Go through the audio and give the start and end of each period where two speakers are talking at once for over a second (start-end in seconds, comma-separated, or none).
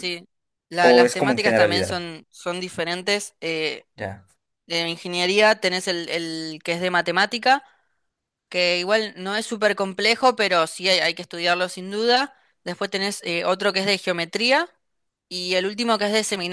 0.8-2.0